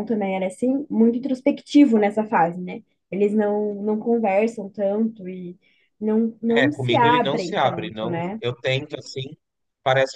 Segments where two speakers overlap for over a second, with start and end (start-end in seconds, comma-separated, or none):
6.5-8.4